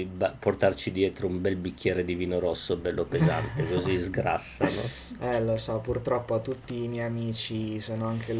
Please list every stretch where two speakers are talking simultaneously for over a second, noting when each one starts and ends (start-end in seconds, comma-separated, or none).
none